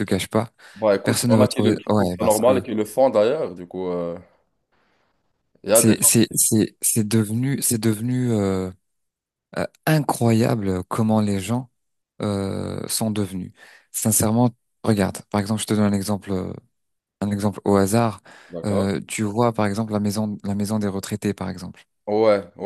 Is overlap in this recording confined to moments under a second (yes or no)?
no